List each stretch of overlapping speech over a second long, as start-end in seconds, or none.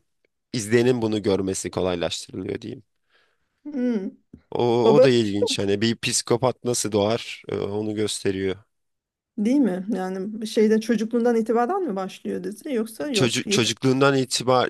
none